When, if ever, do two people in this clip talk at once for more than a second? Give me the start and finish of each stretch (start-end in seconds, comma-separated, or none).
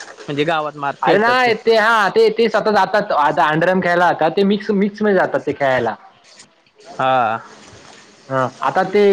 none